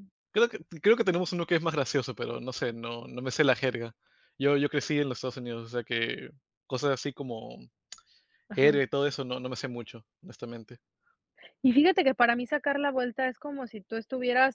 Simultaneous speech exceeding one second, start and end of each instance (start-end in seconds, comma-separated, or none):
none